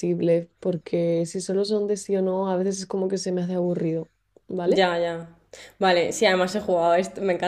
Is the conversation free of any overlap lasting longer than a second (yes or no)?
yes